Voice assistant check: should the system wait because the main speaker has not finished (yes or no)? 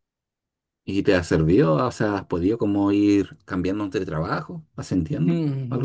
no